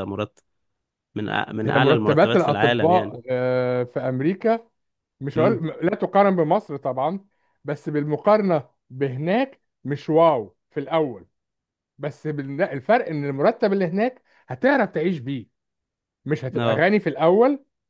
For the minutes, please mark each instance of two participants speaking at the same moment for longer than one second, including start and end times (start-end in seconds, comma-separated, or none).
1.6-3.1